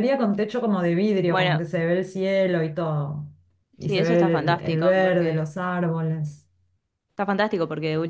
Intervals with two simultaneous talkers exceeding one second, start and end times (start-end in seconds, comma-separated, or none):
3.8-5.5